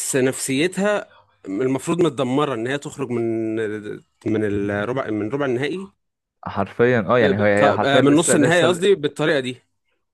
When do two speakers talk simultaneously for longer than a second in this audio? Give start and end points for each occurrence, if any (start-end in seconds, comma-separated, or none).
7.2-8.8